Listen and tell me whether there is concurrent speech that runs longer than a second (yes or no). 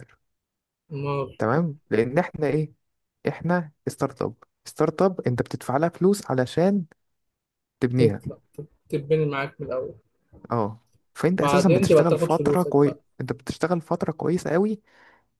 yes